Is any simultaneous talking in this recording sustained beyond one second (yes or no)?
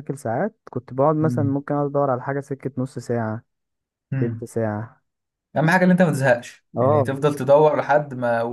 no